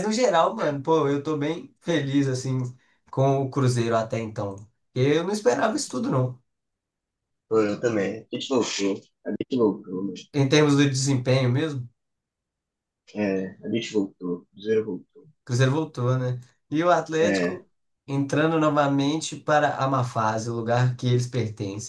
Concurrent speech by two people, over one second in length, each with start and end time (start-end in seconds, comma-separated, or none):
none